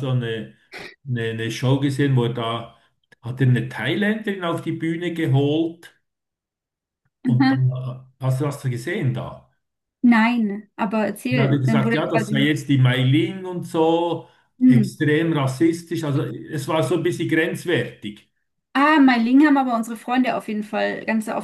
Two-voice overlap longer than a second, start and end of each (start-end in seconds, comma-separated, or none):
11.3-12.5